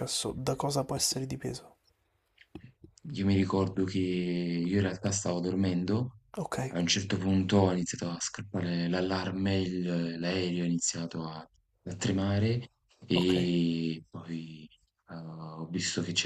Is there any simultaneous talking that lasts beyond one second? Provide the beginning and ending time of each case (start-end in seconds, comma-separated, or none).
none